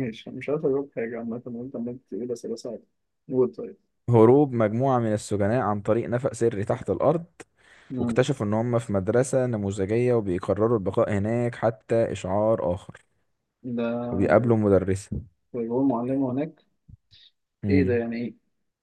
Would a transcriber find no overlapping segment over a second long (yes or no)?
yes